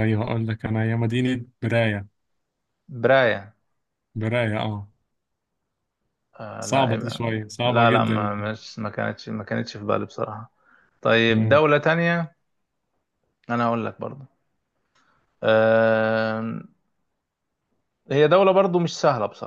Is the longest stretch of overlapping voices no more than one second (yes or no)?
no